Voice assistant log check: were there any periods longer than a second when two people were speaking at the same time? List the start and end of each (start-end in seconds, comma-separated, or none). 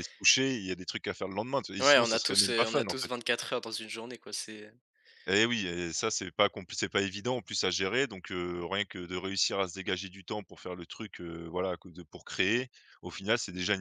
1.8-3.1